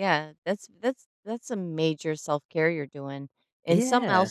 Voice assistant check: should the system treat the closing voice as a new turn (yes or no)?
no